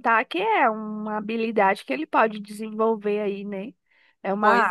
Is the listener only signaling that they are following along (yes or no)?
yes